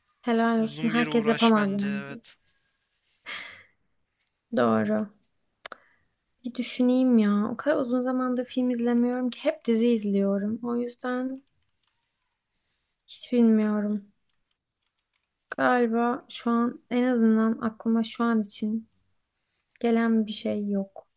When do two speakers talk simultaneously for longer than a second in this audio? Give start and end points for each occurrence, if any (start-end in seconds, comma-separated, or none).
0.6-2.0